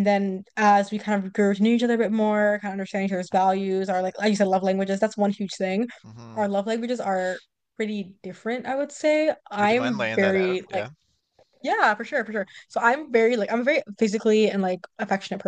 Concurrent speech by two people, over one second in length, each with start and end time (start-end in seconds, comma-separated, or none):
9.6-10.9